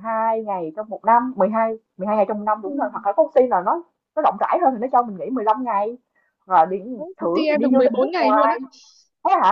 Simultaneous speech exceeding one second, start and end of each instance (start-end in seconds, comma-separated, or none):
7.2-8.6